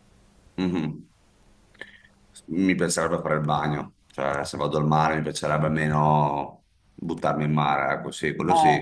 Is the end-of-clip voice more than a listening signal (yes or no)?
yes